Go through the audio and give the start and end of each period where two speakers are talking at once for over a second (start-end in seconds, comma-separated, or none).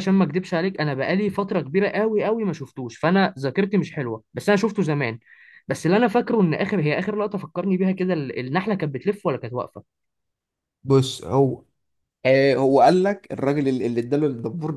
none